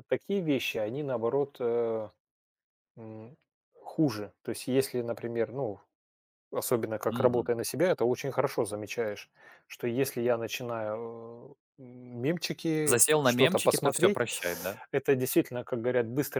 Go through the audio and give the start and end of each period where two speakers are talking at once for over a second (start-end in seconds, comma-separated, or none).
12.8-14.2